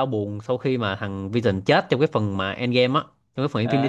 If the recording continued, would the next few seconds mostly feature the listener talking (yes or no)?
yes